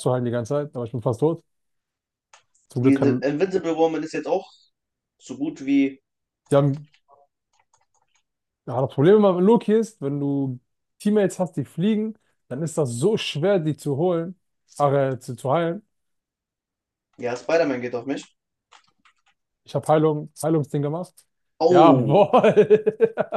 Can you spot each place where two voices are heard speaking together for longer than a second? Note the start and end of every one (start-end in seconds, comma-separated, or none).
none